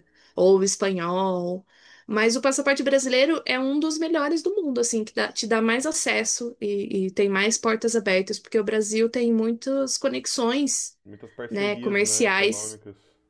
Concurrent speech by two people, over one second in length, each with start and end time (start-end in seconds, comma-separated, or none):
11.5-12.8